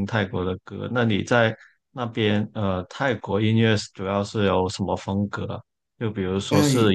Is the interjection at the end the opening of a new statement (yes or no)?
no